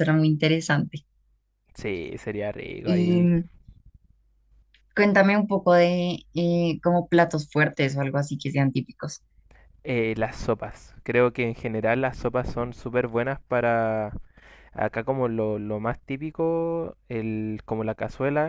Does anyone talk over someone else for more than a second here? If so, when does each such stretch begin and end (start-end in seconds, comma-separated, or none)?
none